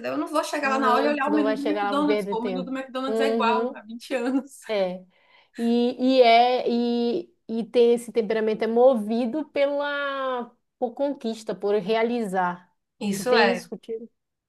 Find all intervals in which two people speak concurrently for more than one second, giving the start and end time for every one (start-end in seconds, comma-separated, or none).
0.6-3.8